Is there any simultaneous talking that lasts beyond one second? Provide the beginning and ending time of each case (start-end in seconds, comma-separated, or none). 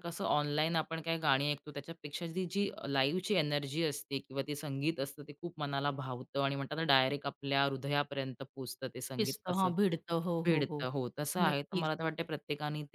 none